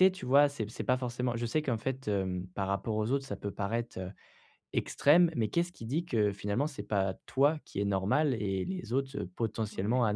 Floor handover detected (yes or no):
no